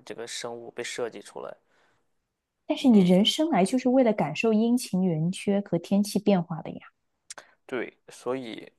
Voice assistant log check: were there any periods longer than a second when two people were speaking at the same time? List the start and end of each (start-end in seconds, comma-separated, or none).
none